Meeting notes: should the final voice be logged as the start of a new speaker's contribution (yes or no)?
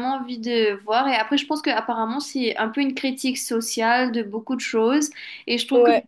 no